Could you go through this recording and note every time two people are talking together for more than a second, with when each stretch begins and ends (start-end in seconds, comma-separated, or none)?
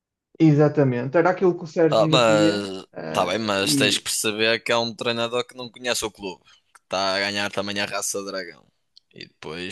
1.9-4.0